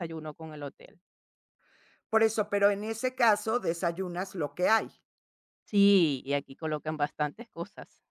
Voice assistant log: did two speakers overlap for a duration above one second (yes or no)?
no